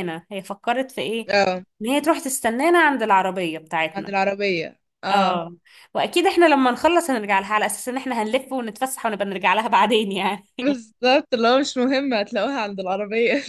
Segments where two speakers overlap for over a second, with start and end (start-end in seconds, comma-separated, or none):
none